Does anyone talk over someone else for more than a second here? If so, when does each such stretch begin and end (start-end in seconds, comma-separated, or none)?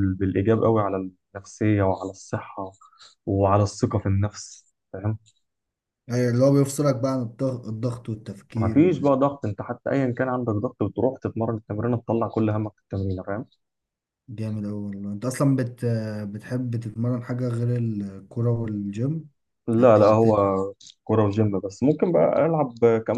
none